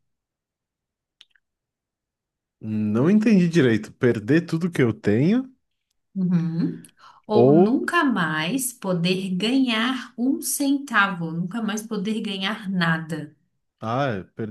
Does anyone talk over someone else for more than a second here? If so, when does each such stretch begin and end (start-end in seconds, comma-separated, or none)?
none